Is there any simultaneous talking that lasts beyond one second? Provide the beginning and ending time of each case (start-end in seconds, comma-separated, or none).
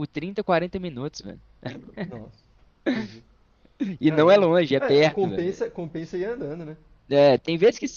4.1-5.6